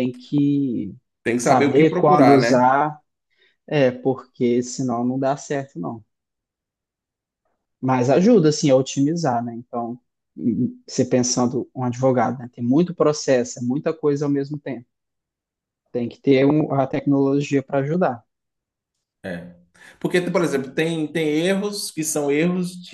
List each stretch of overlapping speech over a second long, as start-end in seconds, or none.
1.4-2.6